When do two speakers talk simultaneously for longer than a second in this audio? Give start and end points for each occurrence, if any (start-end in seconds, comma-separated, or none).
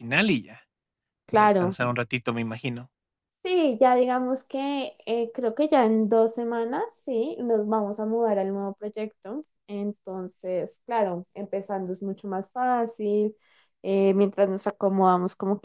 none